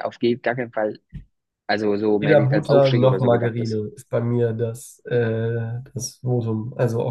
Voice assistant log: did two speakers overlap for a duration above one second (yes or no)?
yes